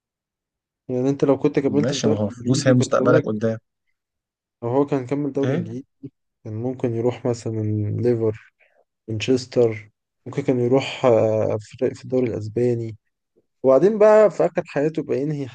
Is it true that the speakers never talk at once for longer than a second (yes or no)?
no